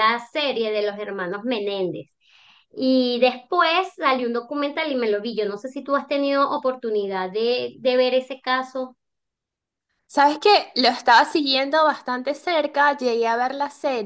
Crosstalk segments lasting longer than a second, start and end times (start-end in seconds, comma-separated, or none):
none